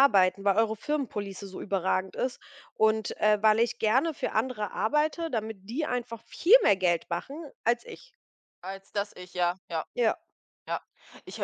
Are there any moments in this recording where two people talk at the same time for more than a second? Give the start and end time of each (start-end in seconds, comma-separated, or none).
none